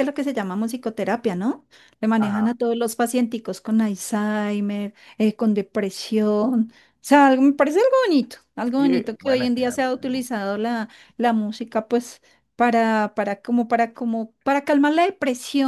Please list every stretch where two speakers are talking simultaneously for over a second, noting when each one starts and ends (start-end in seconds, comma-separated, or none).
8.7-10.2